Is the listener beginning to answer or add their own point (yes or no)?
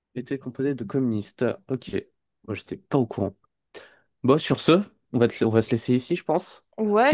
yes